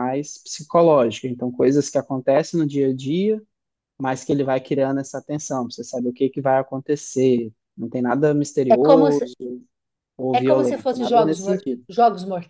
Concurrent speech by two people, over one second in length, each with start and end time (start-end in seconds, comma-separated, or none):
10.3-11.8